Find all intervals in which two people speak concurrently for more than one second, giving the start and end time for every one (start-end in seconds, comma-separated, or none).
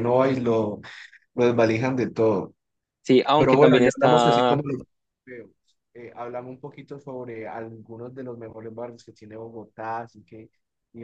3.4-4.6